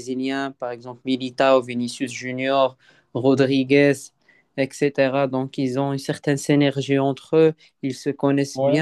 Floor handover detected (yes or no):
no